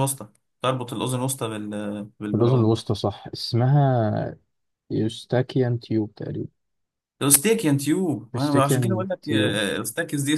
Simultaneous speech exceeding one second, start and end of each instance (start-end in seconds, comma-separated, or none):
8.3-9.6